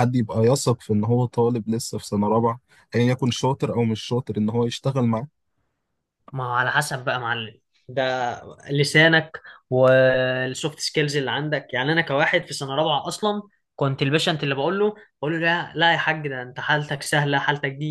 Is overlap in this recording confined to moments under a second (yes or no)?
yes